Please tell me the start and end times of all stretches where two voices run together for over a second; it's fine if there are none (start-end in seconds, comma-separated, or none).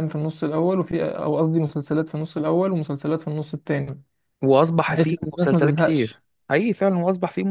4.9-6.2